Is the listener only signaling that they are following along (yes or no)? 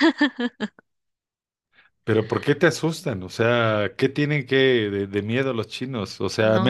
yes